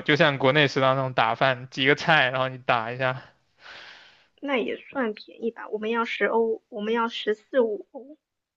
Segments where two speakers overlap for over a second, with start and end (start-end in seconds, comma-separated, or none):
none